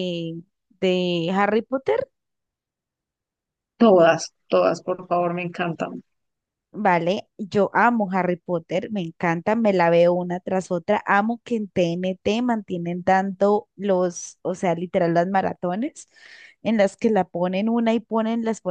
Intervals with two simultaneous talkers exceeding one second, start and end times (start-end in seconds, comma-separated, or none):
none